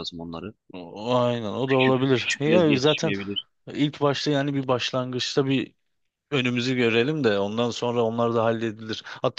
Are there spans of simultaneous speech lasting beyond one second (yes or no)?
yes